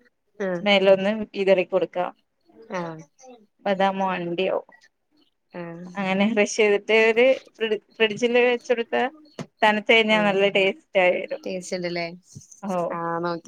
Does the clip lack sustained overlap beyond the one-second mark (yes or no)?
yes